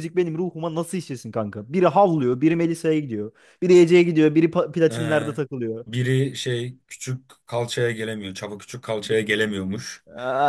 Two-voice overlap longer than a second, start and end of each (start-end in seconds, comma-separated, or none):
none